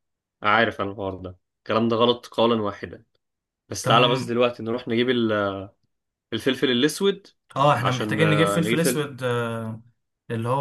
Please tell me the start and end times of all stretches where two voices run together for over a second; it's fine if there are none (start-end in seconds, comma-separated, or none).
7.8-9.1